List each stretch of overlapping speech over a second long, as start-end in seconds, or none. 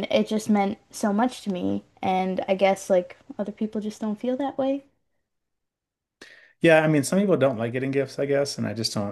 none